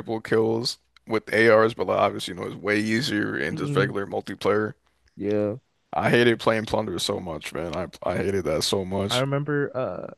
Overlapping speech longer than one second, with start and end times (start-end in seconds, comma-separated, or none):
none